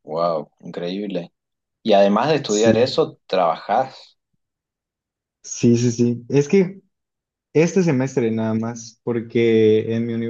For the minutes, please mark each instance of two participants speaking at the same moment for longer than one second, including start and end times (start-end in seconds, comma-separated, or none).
none